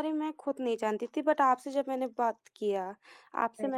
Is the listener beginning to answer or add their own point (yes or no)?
no